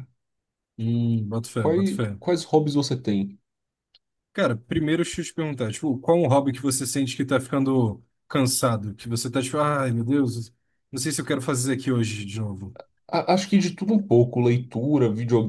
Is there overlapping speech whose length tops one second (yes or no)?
no